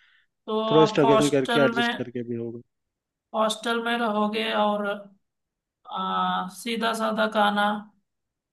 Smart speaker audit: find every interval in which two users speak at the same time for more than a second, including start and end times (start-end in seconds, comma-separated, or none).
0.7-2.1